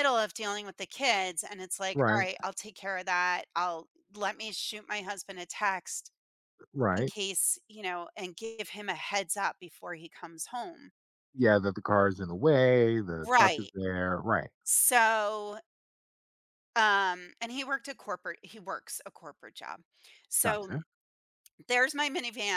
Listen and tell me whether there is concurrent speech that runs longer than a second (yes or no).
no